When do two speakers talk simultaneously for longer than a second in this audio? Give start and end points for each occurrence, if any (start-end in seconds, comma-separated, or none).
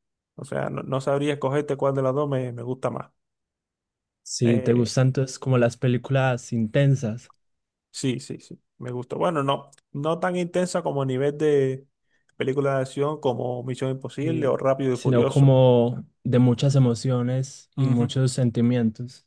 14.2-15.6